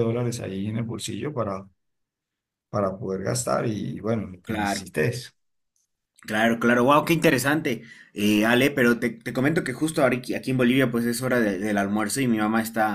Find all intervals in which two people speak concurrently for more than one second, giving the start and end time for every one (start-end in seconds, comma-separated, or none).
none